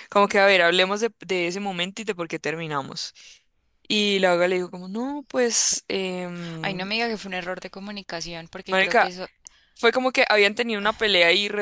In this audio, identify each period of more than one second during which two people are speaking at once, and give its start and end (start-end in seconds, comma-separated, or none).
none